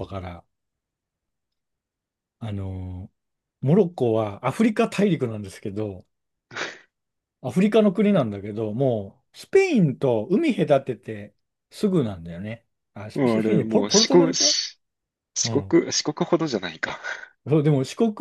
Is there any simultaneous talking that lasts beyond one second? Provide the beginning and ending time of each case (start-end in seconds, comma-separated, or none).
13.1-14.5